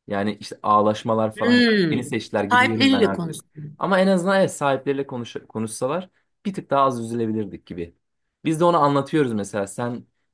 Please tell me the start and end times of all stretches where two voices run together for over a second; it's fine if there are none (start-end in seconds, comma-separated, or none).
1.4-3.8